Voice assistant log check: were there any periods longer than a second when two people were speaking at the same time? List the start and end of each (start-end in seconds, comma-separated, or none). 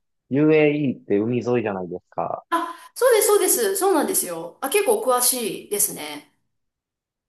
none